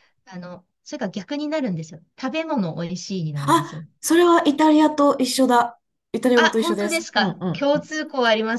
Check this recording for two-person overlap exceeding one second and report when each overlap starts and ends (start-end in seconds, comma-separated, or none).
6.3-7.9